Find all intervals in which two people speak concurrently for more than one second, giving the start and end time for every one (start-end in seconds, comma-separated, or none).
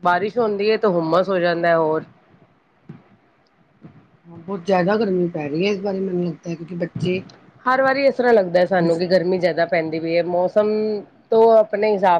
none